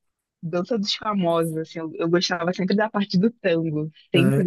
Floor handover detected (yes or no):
no